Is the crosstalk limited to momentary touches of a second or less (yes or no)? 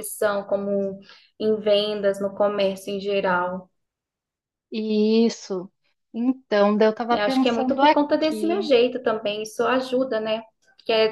no